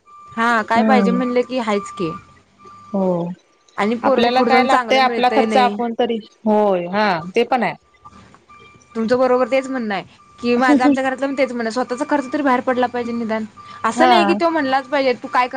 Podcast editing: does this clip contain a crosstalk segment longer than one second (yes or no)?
yes